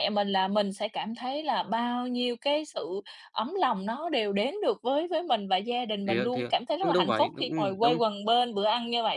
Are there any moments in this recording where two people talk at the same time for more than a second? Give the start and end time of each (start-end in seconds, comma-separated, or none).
6.0-8.0